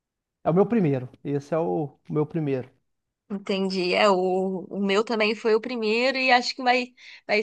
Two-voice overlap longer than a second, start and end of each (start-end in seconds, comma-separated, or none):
none